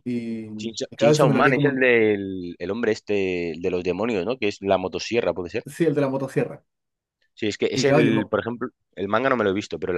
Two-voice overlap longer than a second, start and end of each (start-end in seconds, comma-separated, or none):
0.6-1.9